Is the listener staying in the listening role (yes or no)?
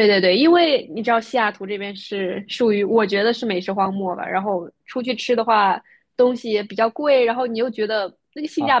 yes